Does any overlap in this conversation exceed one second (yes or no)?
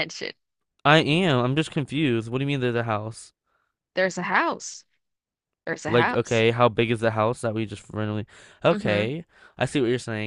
no